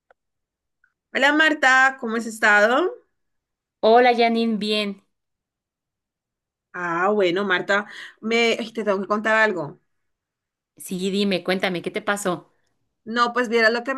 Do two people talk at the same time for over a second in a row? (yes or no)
no